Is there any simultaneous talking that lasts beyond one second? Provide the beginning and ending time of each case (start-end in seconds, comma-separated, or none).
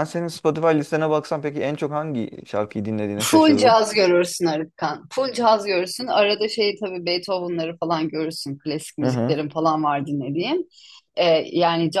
none